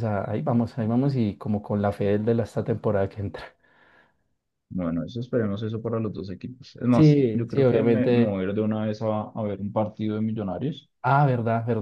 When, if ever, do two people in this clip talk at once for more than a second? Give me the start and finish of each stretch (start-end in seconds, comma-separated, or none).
6.9-8.4